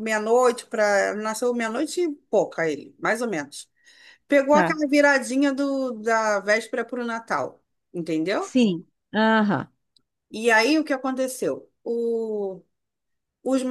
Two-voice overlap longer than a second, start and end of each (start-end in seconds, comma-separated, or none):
none